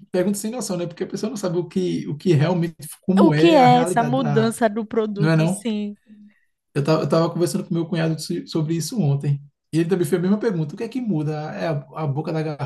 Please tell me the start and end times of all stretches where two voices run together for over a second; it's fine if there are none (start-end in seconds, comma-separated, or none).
3.2-4.6